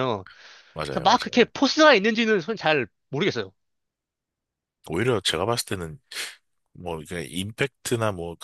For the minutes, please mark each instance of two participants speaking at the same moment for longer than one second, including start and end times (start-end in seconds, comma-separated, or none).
none